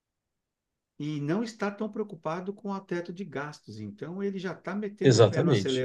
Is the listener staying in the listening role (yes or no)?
yes